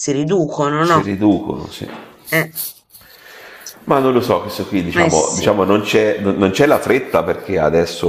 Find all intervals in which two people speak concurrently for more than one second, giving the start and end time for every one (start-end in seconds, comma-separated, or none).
none